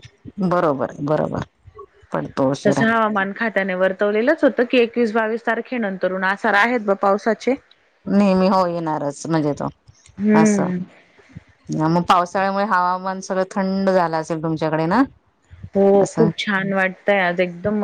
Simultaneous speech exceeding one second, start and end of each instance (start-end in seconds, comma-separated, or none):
none